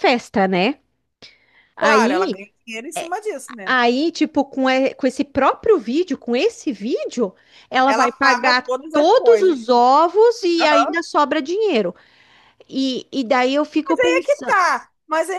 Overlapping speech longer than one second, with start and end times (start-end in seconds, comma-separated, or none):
7.8-9.6